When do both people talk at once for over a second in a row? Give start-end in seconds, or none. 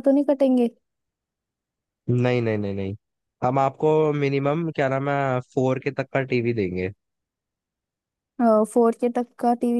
none